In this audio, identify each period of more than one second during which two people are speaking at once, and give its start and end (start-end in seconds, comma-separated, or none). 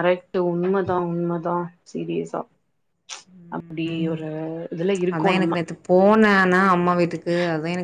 none